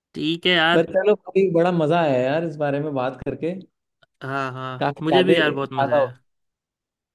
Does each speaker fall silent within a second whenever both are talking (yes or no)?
no